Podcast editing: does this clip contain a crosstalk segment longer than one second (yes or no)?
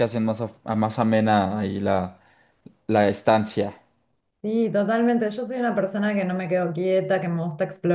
no